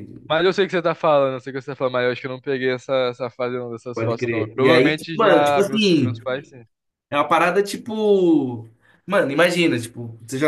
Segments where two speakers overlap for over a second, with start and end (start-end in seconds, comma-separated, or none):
3.9-6.2